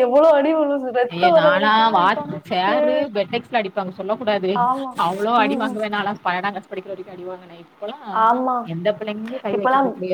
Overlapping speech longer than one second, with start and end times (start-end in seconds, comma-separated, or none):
1.1-3.0